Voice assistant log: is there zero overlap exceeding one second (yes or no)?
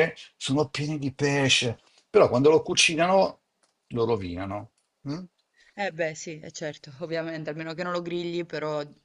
yes